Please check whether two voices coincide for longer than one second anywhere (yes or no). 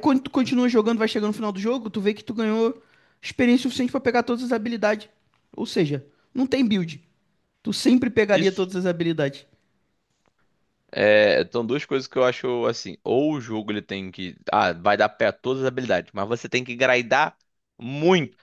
no